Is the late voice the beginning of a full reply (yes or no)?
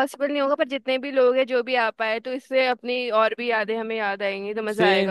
yes